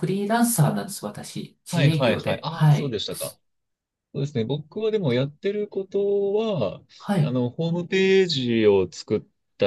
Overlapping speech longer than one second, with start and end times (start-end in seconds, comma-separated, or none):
1.7-3.0